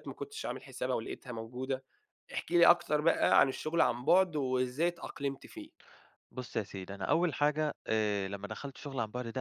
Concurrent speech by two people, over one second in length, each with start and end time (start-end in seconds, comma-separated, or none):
none